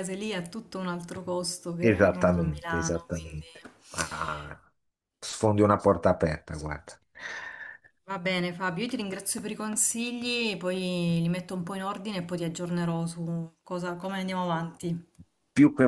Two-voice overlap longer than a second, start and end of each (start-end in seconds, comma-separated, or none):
1.8-3.3